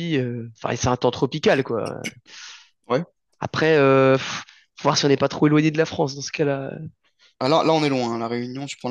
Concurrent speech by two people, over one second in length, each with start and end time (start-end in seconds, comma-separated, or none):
none